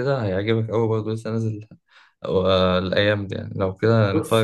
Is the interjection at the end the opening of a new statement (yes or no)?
yes